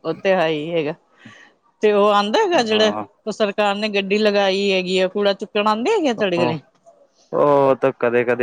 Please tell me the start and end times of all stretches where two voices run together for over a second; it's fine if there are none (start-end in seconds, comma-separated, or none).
none